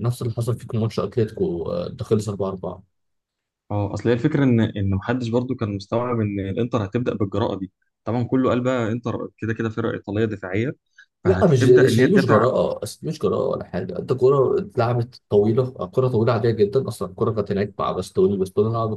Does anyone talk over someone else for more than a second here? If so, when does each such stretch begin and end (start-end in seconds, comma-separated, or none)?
11.2-12.5